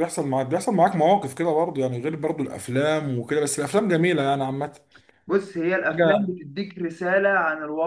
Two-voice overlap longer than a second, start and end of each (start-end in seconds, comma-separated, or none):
none